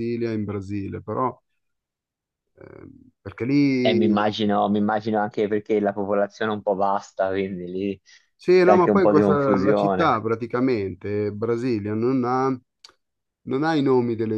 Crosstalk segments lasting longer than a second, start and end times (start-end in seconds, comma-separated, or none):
8.6-10.2